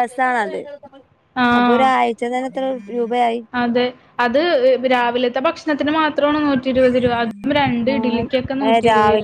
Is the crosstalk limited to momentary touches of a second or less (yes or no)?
yes